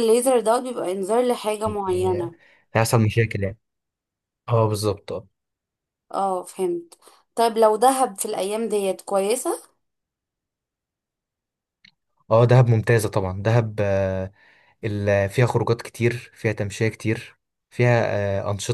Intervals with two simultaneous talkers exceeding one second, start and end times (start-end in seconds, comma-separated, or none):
none